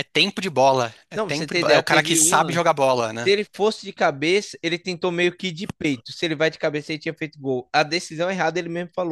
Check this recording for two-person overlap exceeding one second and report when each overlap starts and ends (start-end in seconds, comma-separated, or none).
1.1-2.6